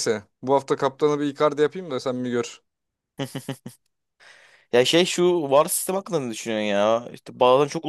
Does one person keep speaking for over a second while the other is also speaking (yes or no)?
no